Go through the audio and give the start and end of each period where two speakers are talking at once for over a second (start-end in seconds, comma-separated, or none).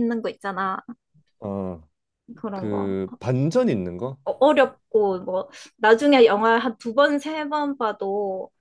none